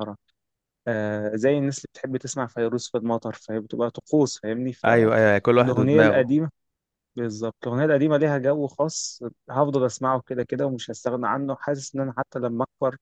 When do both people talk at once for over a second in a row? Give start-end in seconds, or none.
4.8-6.3